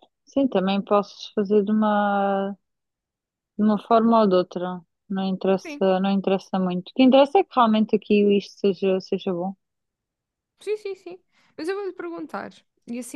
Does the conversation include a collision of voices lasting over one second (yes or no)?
no